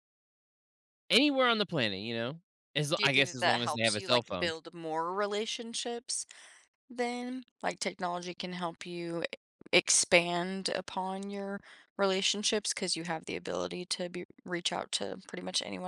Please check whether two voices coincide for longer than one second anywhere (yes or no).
yes